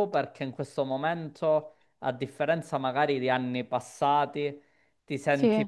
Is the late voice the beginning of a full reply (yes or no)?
no